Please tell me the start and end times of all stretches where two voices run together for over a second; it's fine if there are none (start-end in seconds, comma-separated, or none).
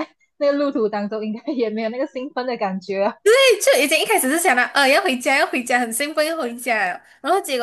none